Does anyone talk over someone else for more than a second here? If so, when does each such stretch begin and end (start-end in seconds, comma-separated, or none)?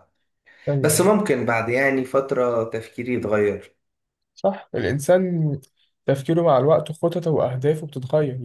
none